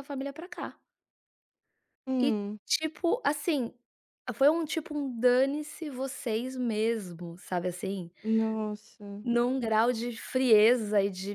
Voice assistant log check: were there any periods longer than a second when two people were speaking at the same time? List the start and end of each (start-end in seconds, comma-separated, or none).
none